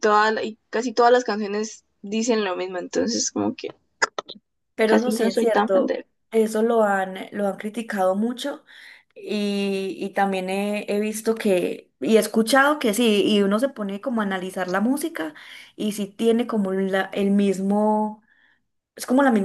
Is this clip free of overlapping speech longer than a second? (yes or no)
no